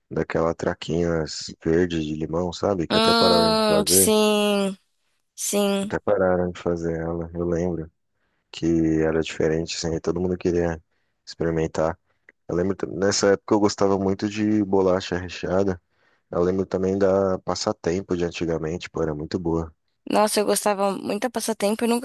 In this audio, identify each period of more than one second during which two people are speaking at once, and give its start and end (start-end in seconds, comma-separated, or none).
2.9-4.1